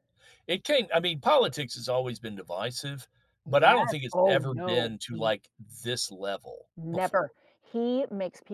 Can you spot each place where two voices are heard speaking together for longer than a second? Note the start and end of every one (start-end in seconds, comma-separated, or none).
3.5-5.3